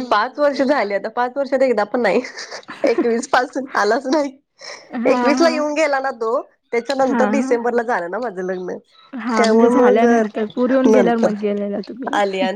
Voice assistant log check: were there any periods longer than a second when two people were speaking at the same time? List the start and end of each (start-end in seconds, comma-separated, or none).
9.4-11.3